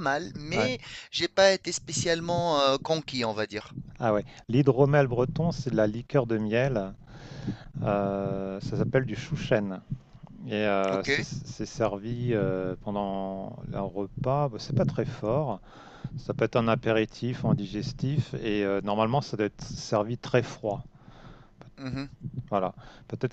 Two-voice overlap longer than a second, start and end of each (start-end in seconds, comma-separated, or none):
none